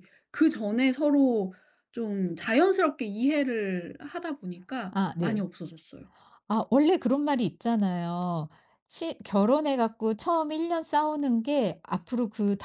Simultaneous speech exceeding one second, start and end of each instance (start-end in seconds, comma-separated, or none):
none